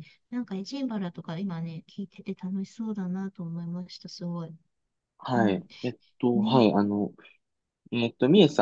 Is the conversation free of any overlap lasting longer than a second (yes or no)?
yes